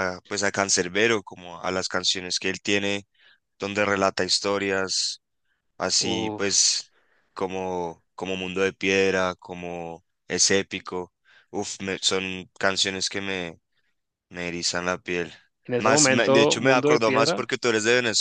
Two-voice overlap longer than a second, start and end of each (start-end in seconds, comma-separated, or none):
15.8-17.5